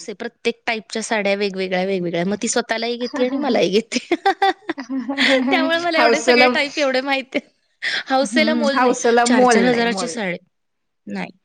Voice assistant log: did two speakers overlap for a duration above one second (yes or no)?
yes